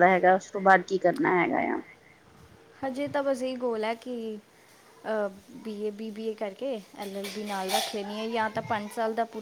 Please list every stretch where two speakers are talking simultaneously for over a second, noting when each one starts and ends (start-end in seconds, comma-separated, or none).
none